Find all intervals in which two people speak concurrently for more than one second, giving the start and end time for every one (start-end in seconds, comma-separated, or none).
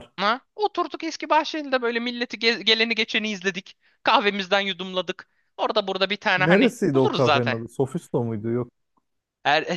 6.3-7.6